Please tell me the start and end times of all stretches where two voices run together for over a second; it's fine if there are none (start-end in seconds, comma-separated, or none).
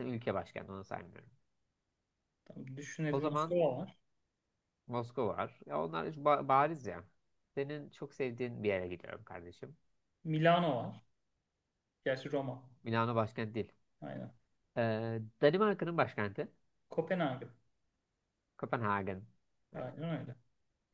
none